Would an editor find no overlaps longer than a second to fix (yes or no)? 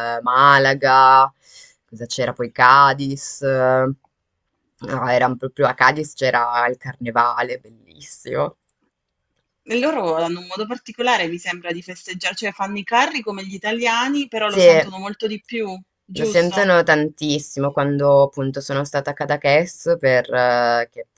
yes